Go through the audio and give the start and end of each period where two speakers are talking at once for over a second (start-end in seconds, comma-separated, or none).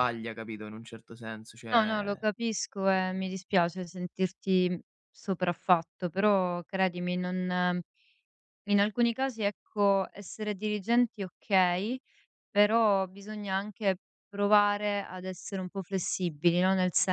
none